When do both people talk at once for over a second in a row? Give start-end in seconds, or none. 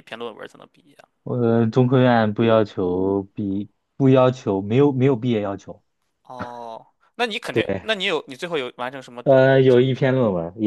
none